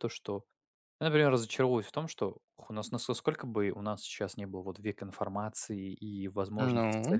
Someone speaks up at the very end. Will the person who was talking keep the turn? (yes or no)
yes